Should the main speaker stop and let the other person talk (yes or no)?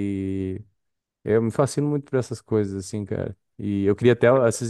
no